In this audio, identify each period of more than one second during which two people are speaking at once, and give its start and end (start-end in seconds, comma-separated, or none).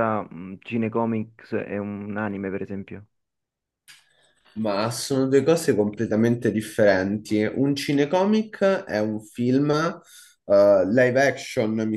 none